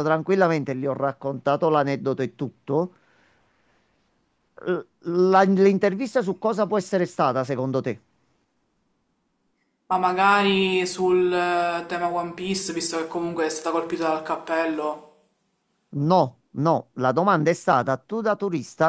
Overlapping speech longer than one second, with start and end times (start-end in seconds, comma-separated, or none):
none